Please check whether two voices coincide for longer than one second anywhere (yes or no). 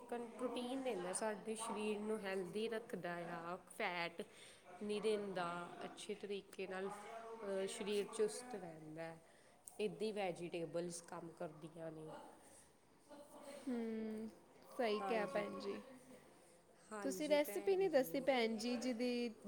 yes